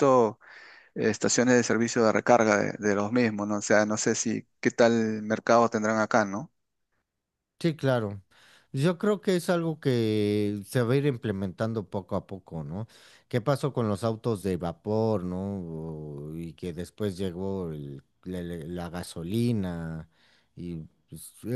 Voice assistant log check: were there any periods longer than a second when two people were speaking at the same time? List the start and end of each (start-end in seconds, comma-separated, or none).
none